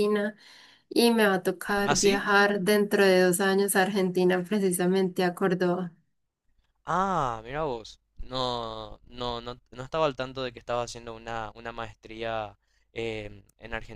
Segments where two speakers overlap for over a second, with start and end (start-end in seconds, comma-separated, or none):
none